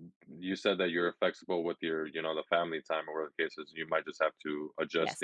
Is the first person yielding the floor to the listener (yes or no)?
no